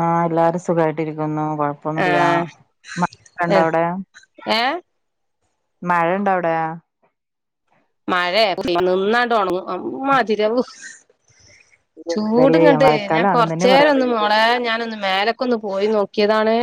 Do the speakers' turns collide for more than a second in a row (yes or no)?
yes